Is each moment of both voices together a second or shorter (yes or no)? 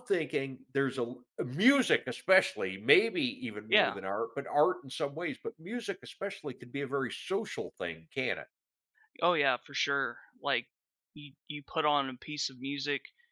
yes